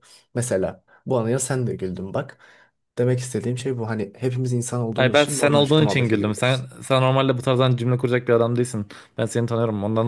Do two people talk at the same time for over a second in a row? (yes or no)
yes